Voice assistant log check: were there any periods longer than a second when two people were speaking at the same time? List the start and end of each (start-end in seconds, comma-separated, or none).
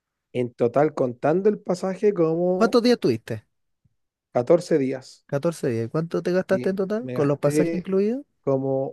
6.5-7.9